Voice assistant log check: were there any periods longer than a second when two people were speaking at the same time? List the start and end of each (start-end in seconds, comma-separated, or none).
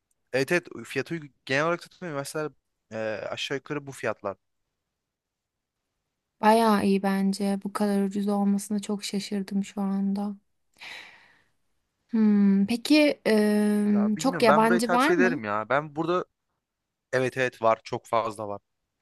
13.9-15.4